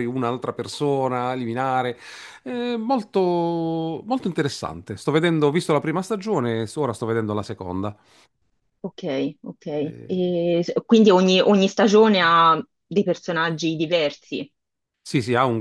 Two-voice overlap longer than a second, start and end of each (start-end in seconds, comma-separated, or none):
none